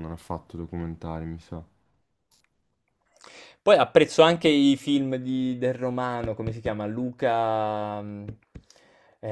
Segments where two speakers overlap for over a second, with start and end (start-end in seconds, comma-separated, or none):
none